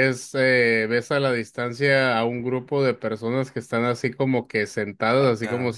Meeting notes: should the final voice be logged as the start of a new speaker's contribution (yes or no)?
no